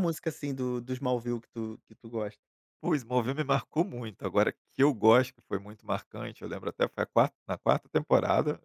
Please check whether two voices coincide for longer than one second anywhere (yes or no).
no